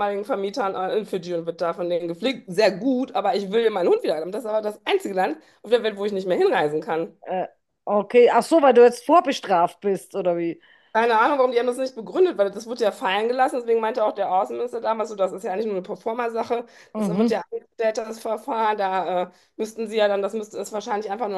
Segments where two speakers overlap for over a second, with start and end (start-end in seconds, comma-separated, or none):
none